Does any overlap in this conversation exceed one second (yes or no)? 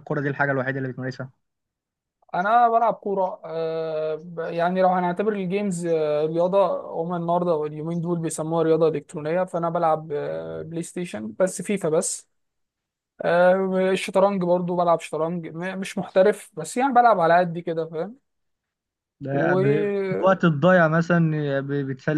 yes